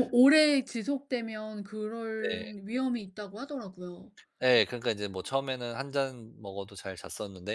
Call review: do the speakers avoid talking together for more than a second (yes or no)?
yes